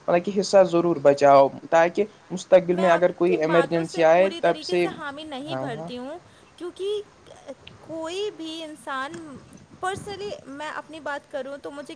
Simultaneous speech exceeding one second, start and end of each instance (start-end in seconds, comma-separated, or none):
2.7-4.6